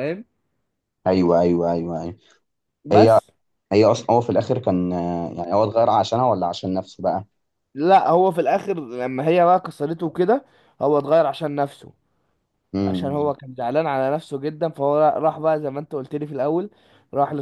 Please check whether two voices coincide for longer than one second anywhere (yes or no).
no